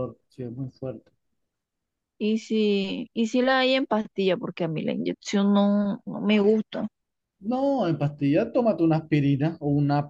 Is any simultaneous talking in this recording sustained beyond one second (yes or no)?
no